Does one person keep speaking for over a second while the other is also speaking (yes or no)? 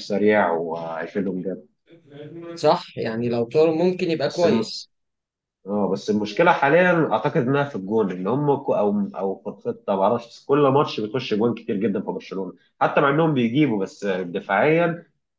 no